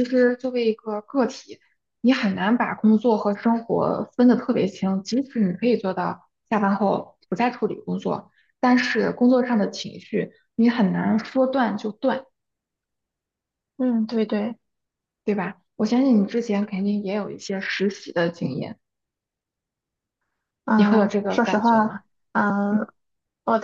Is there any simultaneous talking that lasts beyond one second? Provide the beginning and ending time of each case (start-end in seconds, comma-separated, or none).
20.8-22.0